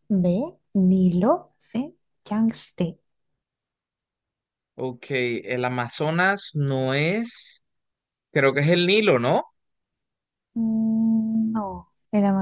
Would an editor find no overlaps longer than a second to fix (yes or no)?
yes